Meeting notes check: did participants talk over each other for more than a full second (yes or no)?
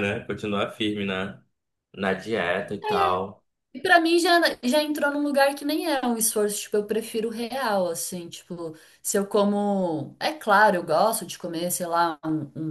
no